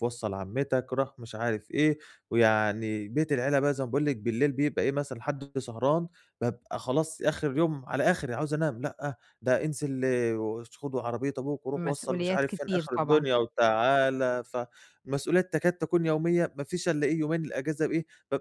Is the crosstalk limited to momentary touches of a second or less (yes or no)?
no